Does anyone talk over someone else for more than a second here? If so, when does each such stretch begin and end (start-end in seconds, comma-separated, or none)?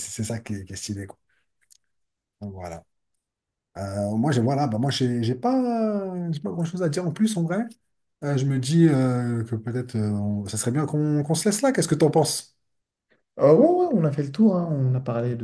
none